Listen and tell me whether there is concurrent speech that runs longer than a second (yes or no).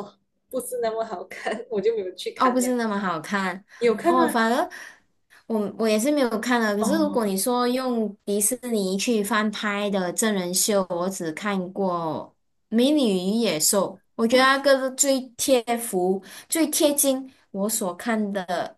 no